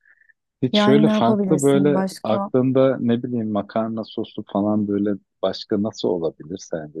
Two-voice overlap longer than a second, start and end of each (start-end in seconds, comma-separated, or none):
0.7-2.5